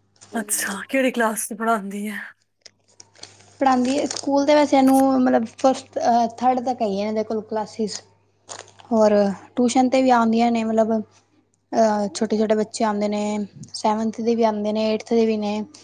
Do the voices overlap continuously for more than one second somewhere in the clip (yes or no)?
no